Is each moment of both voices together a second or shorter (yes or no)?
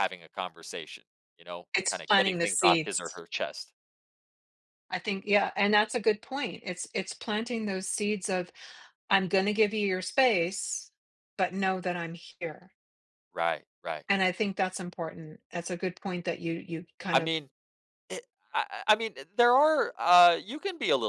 no